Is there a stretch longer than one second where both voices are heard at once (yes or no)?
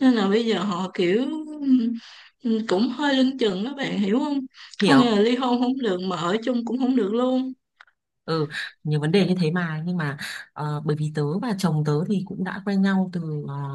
no